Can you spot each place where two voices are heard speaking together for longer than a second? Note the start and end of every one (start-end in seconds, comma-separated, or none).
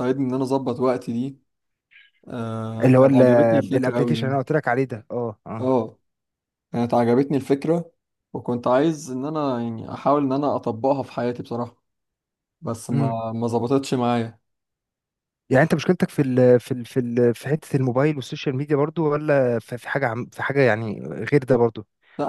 2.8-4.4